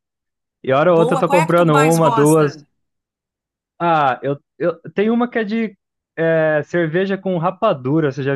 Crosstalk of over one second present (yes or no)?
yes